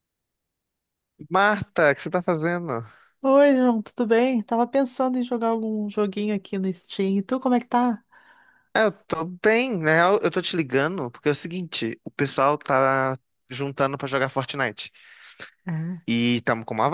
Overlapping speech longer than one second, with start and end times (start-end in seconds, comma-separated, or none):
none